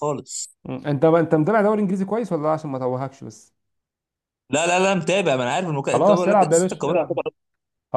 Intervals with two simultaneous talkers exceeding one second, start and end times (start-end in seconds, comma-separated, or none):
5.9-7.2